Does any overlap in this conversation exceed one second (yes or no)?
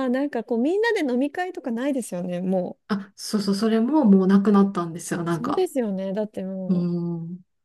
no